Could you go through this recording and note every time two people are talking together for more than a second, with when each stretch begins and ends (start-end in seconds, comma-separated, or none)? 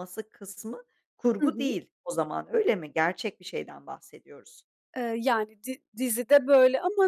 none